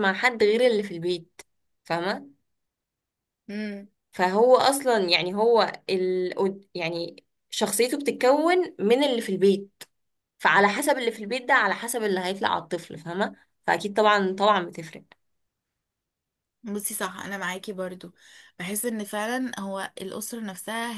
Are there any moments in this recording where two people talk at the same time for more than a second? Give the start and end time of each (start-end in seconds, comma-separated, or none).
none